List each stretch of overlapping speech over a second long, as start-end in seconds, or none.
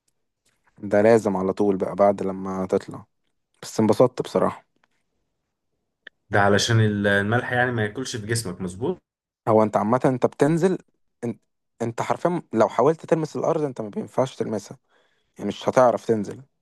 none